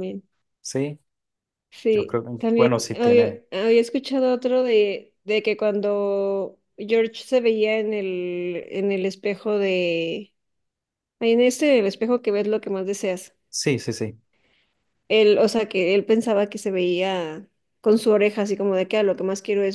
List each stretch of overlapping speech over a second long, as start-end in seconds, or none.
1.9-3.4